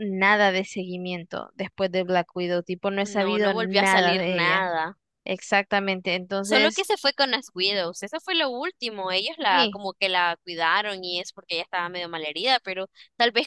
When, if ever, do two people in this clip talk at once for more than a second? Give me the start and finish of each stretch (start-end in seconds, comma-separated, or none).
3.2-4.7